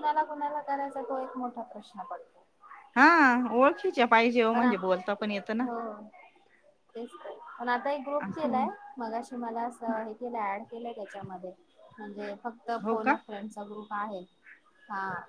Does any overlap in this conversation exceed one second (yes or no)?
no